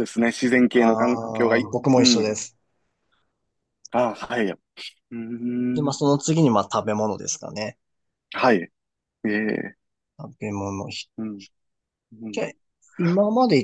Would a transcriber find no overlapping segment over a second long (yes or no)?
no